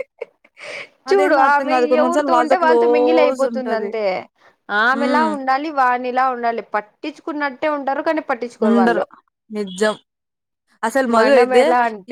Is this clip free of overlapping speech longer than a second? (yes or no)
no